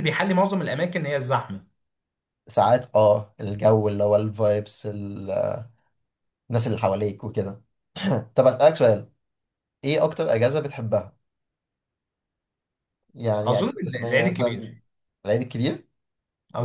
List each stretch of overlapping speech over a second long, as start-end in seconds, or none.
13.4-14.7